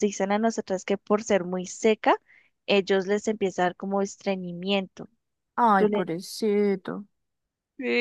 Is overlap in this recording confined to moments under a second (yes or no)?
yes